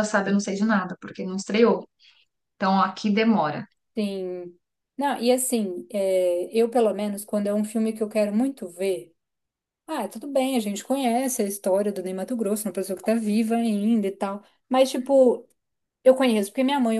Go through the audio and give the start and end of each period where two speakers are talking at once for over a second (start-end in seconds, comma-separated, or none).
none